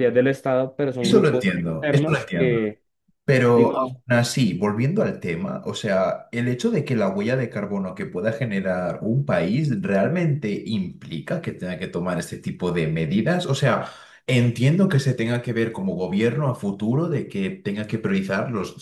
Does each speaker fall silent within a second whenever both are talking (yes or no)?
no